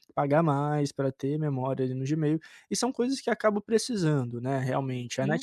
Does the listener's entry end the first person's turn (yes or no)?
no